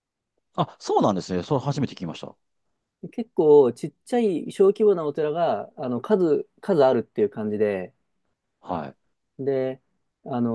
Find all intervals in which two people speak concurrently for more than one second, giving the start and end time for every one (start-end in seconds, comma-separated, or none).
none